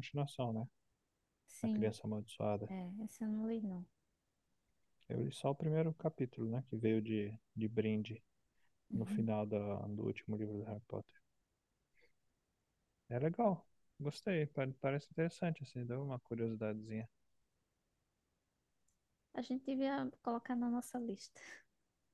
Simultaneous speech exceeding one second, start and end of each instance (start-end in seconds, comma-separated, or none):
none